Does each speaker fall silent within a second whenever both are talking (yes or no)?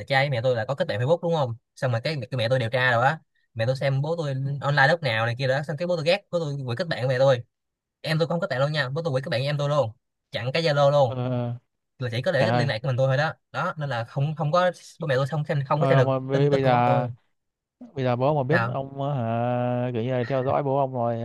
no